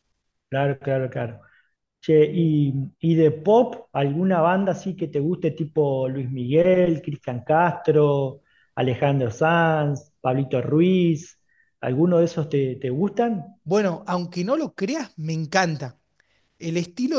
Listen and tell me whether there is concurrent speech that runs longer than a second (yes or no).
no